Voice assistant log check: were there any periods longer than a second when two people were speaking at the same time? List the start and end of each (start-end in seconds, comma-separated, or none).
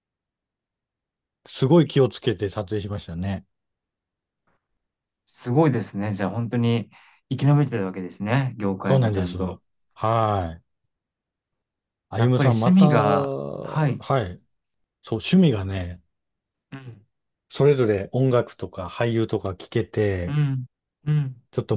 12.2-14.1